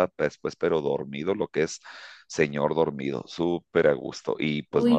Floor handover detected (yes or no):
yes